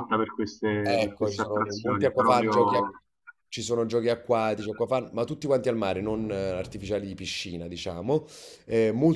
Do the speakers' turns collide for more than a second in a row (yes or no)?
yes